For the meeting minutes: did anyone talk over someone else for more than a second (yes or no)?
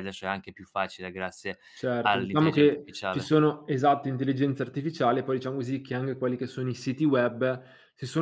yes